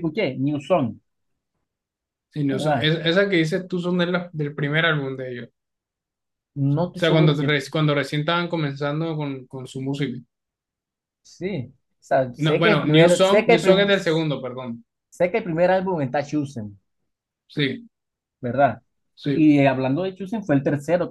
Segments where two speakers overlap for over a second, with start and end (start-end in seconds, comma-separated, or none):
12.4-13.9